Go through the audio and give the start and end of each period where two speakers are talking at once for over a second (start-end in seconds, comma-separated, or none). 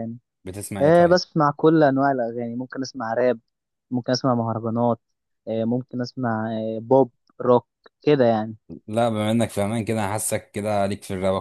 none